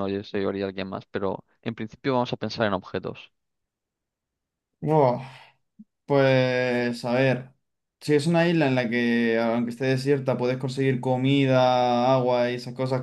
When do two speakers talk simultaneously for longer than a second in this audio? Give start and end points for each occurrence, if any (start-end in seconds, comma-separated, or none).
none